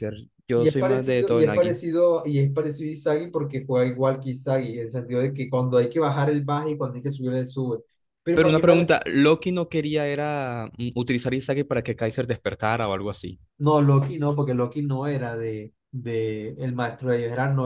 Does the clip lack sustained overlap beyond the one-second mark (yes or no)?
no